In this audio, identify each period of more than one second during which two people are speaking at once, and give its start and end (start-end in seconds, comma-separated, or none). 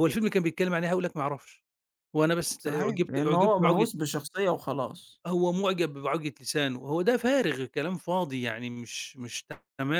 2.6-3.9